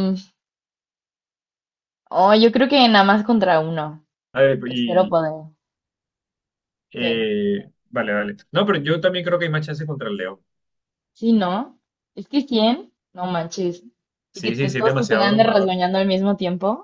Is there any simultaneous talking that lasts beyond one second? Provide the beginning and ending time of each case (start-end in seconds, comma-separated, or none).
14.3-15.7